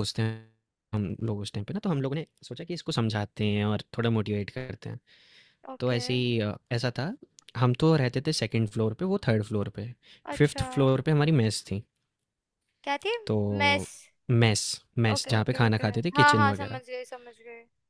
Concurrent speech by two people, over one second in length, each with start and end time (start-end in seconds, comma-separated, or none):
15.1-16.8